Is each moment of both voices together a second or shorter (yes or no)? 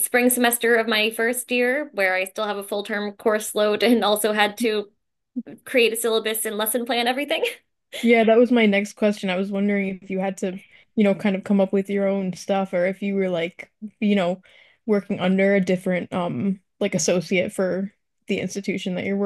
yes